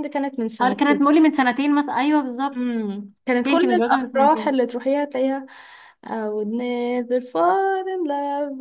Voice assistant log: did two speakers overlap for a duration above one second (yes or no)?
yes